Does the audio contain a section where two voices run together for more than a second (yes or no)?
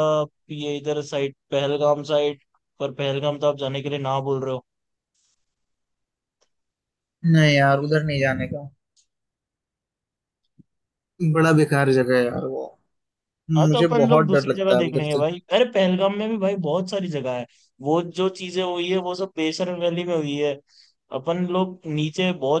yes